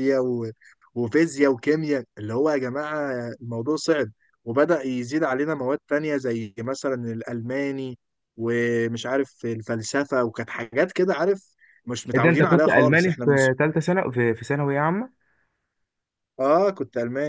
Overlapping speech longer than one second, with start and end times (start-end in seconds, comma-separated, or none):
12.2-13.3